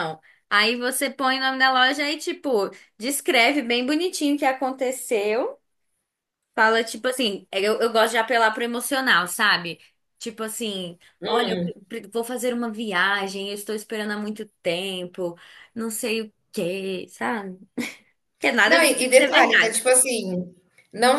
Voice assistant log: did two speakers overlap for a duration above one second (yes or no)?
yes